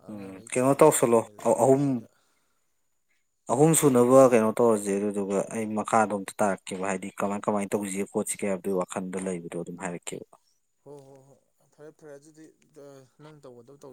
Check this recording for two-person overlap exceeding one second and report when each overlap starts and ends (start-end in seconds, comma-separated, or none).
0.5-2.0